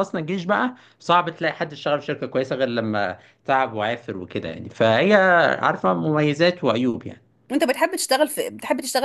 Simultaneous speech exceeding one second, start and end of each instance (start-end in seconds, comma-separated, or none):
none